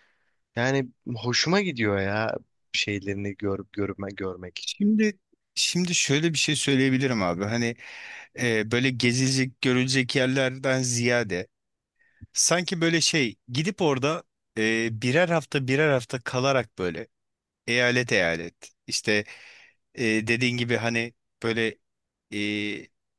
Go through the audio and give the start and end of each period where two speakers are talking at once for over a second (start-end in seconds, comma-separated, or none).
none